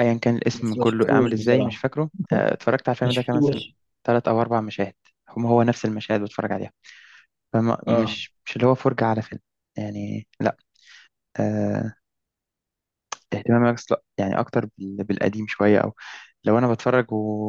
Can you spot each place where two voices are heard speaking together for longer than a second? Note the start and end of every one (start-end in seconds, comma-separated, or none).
0.5-1.8